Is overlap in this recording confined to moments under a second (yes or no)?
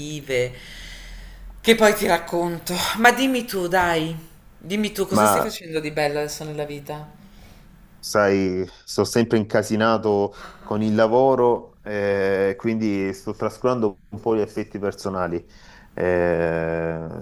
yes